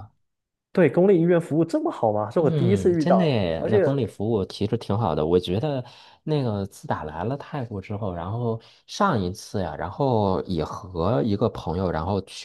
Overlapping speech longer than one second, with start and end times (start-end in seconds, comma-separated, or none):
2.4-3.8